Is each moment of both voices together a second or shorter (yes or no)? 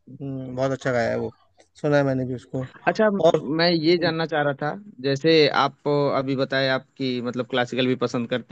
yes